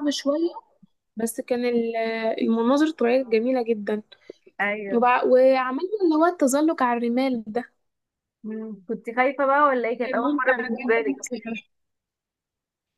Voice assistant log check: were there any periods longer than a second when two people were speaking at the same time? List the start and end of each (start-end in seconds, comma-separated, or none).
10.0-11.4